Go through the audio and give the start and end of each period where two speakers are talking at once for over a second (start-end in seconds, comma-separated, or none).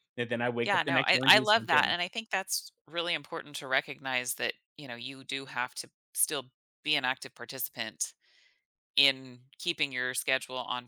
0.6-2.0